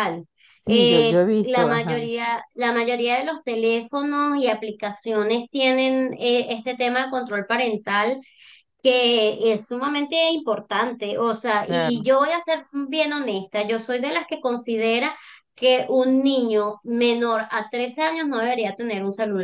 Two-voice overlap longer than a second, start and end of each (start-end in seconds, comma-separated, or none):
0.7-2.1